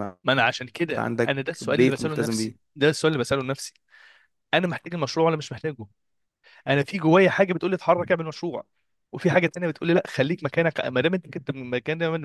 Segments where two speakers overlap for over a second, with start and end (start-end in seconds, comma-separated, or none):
0.8-2.5